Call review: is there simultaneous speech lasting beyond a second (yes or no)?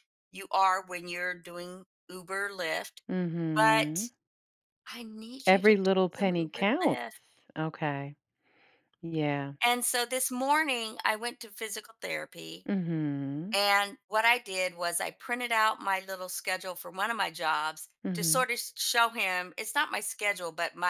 yes